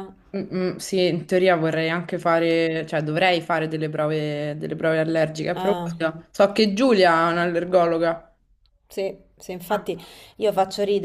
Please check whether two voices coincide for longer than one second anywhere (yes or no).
no